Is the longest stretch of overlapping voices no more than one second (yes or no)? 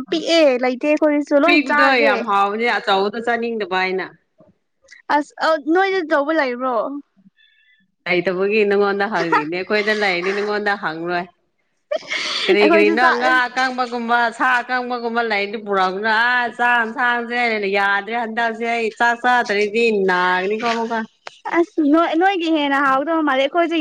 yes